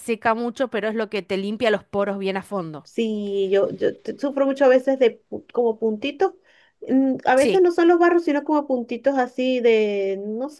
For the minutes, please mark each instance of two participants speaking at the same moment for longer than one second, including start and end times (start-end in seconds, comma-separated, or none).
none